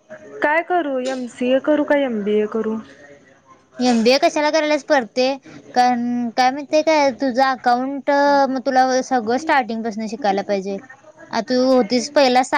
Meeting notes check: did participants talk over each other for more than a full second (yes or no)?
no